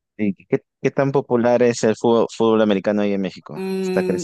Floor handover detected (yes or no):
yes